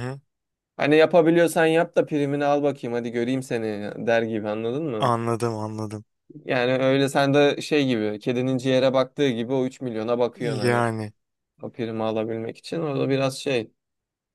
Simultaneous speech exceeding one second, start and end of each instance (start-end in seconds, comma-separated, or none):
none